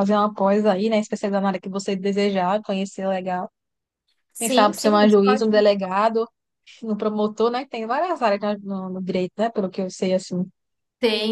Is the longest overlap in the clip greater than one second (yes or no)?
yes